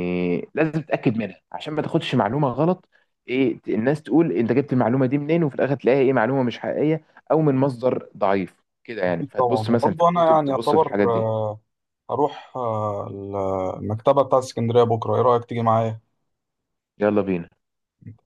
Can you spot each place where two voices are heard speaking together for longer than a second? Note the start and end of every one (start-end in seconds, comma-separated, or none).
9.1-10.9